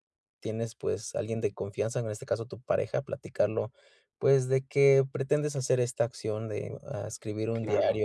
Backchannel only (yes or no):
yes